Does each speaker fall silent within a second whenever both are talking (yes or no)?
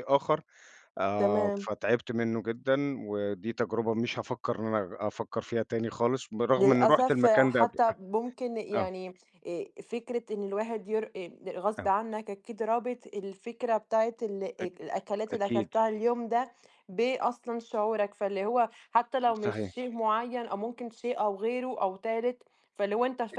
no